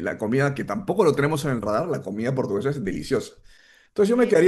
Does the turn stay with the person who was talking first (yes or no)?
yes